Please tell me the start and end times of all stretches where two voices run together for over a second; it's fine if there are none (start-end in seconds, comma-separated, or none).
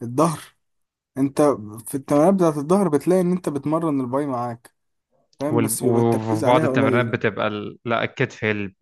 5.5-7.2